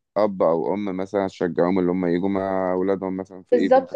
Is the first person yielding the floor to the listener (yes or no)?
yes